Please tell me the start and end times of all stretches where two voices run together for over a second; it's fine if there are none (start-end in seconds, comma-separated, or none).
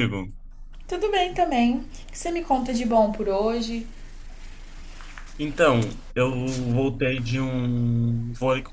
none